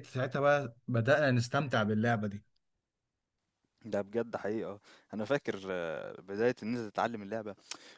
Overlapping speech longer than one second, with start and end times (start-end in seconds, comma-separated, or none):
none